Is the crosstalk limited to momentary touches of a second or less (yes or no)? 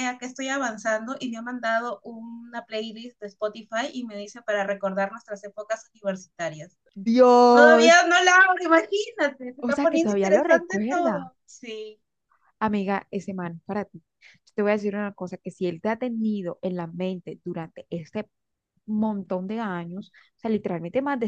no